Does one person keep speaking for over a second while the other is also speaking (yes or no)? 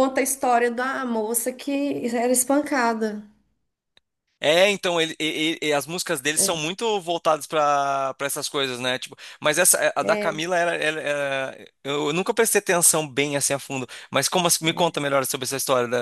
no